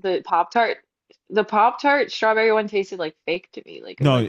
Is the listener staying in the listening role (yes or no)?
no